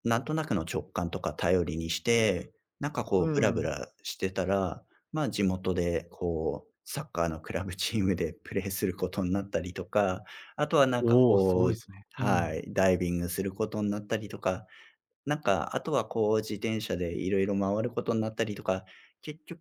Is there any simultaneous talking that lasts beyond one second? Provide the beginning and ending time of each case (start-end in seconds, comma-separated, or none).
11.0-12.6